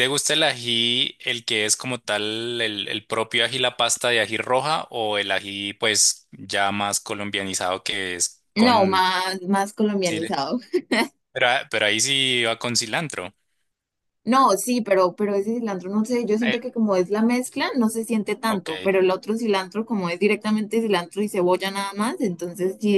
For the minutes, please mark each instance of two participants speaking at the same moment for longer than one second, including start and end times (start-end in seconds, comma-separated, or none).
none